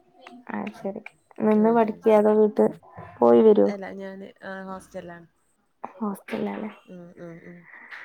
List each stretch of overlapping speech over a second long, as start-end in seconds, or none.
none